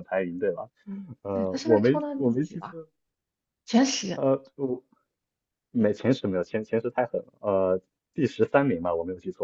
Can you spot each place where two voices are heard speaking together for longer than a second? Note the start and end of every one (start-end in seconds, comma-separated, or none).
1.3-2.8